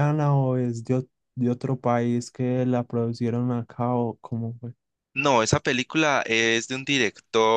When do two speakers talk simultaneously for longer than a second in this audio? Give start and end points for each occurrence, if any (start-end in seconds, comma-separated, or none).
none